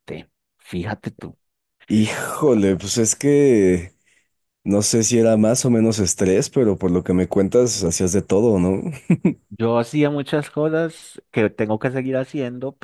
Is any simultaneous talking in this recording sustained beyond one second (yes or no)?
no